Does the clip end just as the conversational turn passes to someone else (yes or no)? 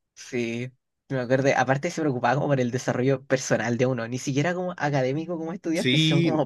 yes